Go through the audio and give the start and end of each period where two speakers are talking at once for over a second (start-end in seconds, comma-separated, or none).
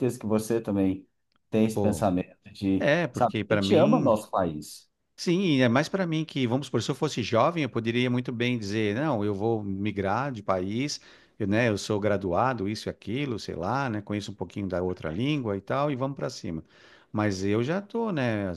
2.8-4.1